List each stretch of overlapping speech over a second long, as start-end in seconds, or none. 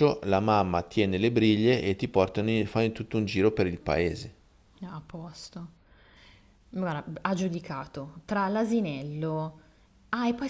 none